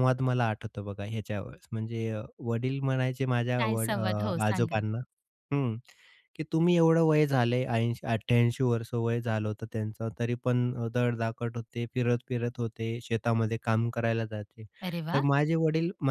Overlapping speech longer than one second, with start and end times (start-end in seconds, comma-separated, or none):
3.6-4.8